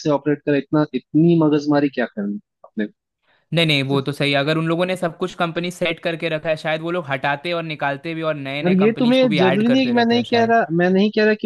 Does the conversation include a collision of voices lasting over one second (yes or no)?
yes